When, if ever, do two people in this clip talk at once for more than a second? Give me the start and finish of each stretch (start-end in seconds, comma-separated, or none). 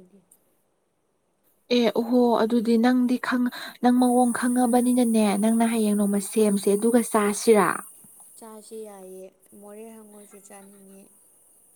none